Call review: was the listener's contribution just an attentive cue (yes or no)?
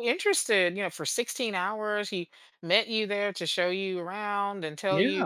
yes